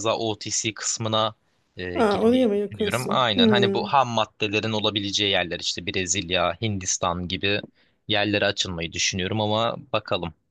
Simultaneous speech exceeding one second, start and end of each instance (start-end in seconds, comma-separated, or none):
1.9-3.9